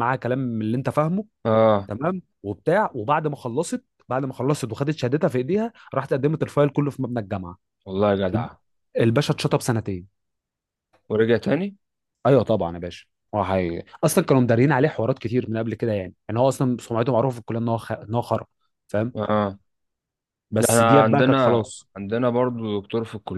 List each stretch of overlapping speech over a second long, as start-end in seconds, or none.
20.6-21.9